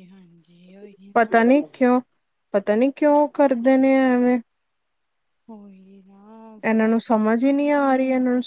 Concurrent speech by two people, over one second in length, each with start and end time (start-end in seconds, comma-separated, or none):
none